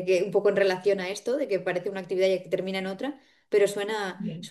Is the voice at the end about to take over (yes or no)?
yes